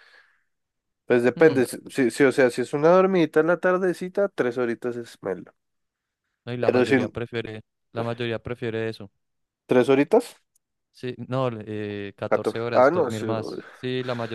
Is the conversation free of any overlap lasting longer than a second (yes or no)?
no